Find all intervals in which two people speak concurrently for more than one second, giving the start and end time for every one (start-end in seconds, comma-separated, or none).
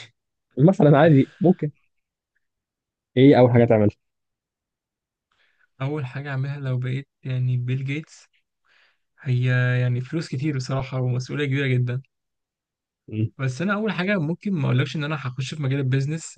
none